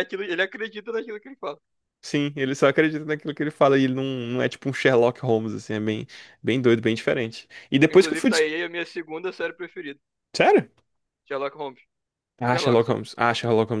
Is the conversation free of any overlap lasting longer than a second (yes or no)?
yes